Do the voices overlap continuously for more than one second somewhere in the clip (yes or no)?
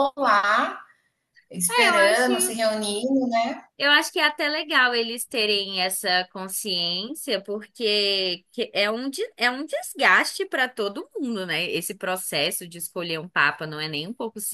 no